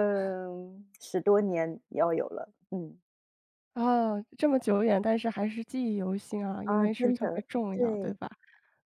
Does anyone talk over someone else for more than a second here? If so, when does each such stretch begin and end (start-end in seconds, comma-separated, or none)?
6.6-8.2